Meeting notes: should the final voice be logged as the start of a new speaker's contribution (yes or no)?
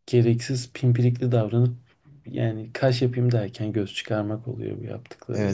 yes